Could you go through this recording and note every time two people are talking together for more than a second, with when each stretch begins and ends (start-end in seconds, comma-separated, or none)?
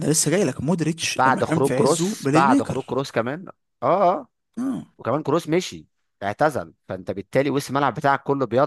1.2-3.0